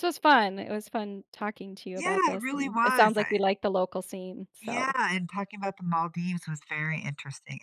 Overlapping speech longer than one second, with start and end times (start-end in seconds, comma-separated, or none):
1.9-3.4